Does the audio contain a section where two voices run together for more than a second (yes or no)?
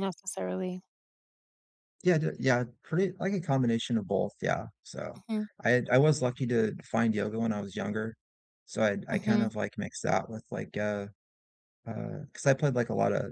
no